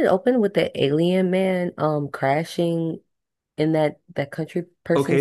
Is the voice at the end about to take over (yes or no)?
yes